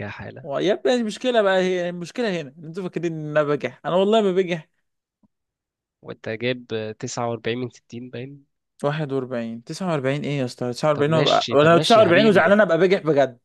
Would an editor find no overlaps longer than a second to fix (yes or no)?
no